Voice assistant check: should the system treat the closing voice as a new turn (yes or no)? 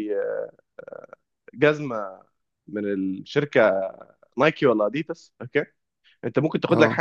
no